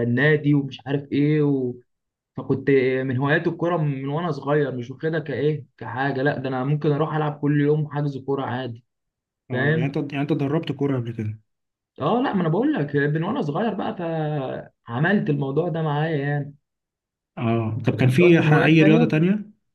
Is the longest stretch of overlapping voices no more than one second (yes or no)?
no